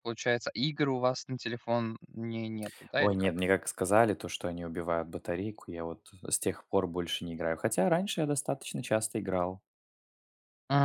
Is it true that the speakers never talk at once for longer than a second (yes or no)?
yes